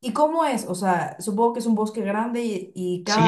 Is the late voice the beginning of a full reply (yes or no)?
yes